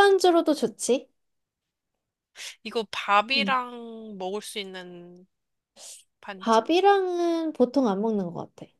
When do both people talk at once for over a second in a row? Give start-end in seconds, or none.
none